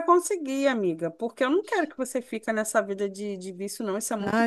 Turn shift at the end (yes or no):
yes